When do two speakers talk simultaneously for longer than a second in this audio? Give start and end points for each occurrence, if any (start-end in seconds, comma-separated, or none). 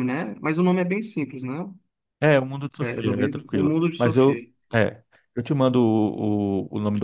2.8-4.5